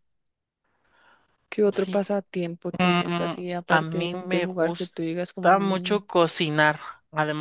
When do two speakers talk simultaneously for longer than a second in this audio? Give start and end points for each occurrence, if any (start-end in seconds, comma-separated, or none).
2.8-6.0